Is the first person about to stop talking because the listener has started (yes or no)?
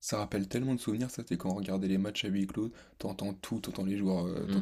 yes